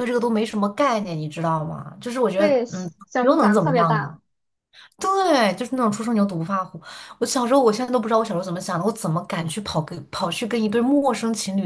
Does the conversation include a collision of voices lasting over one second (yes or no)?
yes